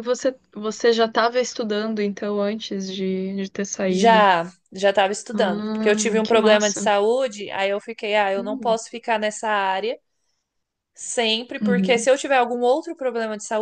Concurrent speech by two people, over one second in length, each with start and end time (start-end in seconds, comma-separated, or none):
5.3-6.9